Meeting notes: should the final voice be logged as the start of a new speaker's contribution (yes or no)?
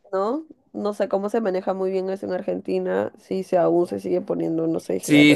yes